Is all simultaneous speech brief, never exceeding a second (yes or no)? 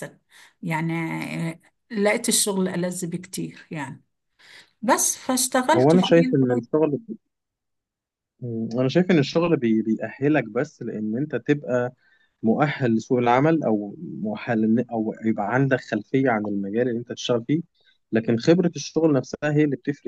yes